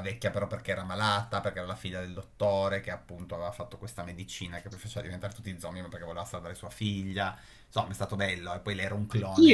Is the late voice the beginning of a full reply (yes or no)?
yes